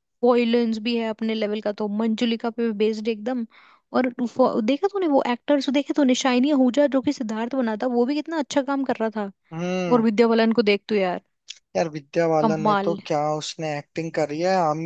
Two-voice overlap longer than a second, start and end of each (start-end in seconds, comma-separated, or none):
none